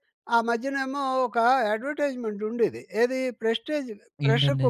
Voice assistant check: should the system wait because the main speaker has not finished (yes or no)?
yes